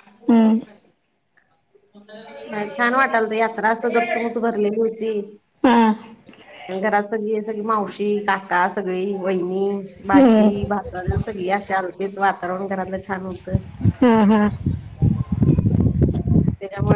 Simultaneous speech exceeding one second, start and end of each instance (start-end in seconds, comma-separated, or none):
none